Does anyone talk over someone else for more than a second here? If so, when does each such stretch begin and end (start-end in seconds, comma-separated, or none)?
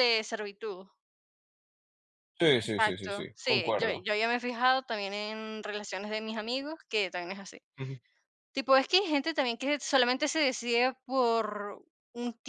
2.7-4.1